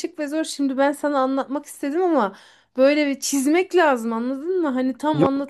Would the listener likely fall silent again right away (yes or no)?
no